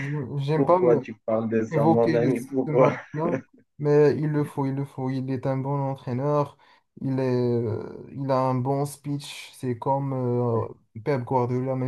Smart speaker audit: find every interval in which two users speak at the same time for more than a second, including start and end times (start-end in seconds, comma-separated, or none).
1.7-2.9